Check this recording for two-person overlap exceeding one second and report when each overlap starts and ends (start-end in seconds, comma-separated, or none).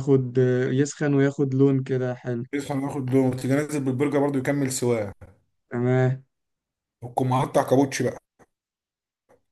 none